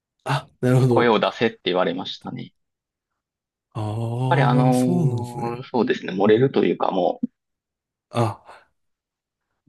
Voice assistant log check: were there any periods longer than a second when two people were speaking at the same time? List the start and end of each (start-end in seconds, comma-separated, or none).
4.3-5.6